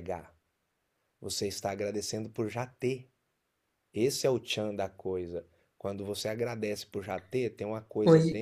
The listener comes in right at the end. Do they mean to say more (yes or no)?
no